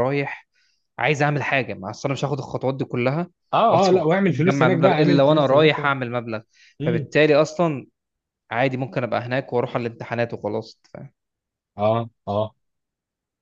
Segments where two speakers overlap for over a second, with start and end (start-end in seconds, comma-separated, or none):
3.7-5.9